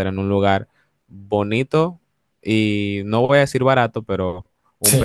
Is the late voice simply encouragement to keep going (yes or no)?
no